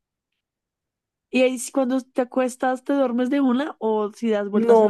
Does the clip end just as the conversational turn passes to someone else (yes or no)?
yes